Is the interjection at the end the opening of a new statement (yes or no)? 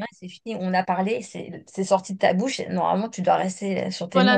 yes